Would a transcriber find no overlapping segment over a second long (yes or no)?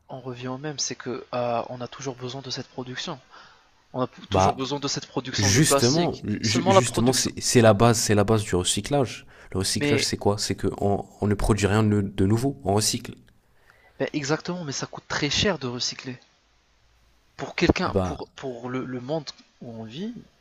no